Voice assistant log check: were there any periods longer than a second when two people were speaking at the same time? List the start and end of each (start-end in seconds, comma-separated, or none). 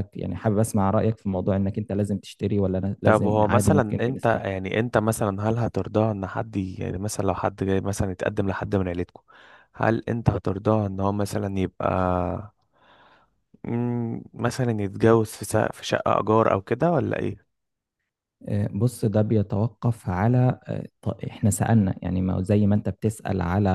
3.0-4.5